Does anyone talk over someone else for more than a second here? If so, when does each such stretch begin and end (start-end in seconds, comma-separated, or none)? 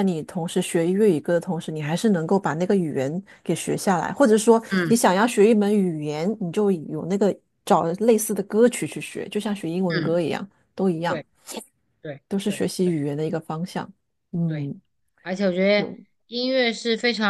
none